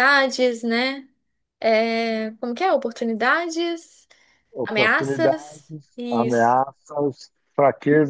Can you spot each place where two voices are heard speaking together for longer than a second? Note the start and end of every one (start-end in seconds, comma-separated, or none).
4.6-6.6